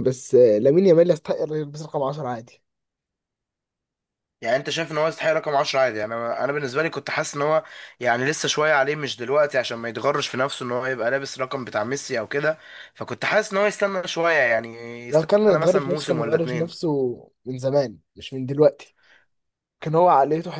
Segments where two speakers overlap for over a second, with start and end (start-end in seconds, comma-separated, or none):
15.1-16.7